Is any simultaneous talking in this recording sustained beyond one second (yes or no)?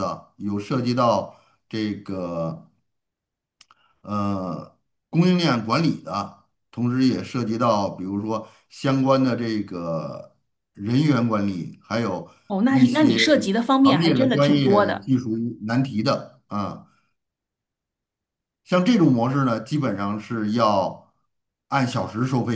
yes